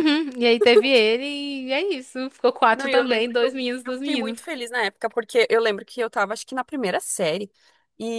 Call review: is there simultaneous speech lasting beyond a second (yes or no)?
yes